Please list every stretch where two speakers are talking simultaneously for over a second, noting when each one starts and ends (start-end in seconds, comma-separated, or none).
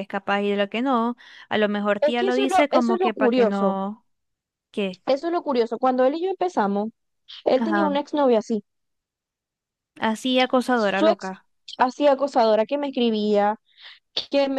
2.0-3.8